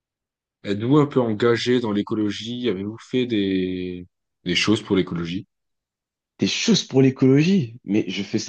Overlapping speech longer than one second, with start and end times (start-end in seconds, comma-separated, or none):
none